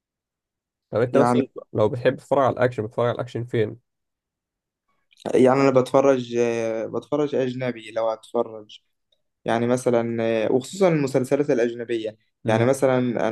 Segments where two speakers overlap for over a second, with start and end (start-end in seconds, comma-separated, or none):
none